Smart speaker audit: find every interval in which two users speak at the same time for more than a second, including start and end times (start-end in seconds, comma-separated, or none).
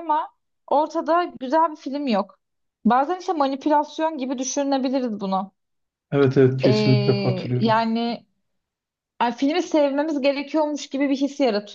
6.6-7.8